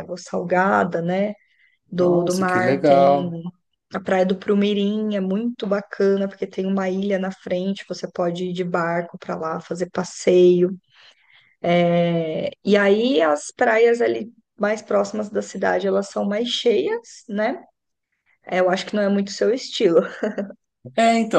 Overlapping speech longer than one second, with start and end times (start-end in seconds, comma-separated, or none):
2.0-3.3